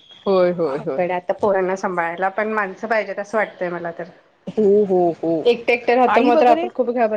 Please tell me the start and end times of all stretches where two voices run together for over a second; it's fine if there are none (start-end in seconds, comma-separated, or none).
none